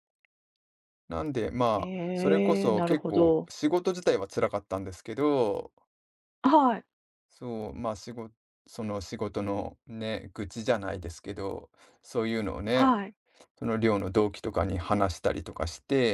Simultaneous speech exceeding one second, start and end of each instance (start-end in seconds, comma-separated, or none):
1.8-3.5